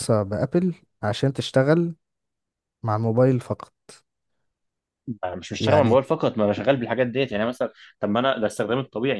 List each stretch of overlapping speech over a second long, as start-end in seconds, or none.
none